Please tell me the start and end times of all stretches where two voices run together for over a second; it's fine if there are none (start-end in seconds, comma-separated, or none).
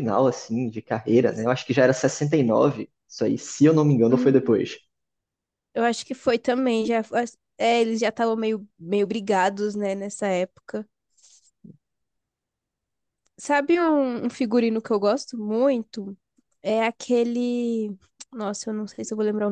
none